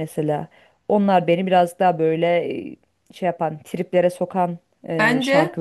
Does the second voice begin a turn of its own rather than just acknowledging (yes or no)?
yes